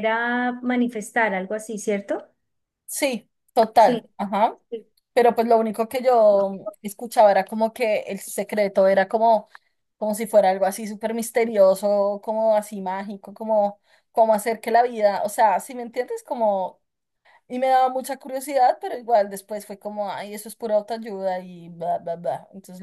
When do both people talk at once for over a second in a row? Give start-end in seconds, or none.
none